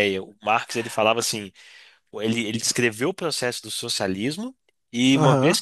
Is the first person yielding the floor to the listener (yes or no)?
yes